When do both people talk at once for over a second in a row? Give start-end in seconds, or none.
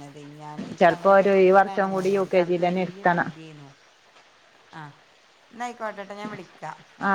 0.8-3.3